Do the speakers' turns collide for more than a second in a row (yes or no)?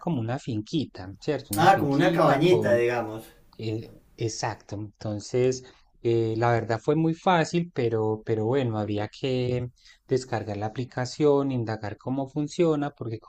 yes